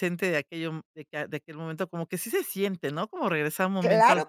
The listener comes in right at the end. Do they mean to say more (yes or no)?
yes